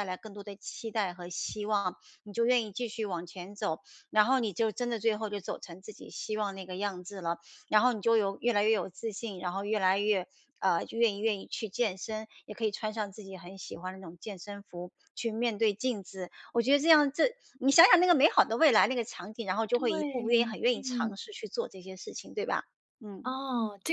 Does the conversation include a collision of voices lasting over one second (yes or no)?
yes